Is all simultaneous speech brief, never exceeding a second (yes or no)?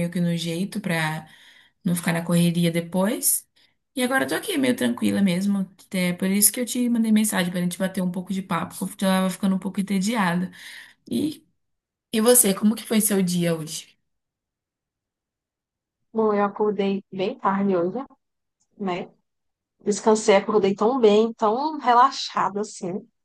yes